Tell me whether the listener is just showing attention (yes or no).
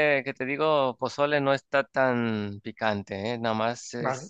no